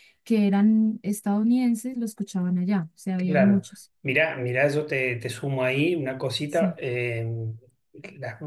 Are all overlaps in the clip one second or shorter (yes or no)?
yes